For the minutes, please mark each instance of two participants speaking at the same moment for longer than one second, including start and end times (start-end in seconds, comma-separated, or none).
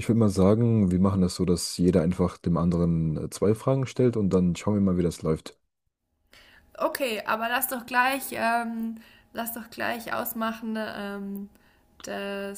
none